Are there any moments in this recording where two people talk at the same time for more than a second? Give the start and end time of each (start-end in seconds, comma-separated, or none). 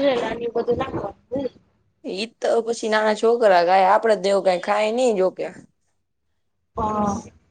none